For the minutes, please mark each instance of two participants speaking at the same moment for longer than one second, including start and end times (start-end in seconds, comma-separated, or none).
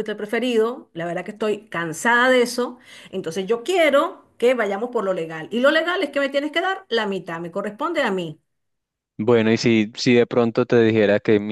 none